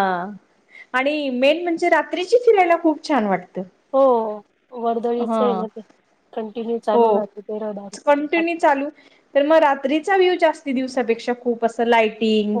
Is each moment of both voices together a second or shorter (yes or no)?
yes